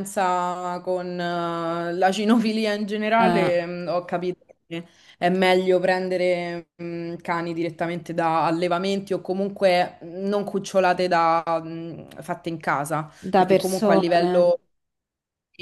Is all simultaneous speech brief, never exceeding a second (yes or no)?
no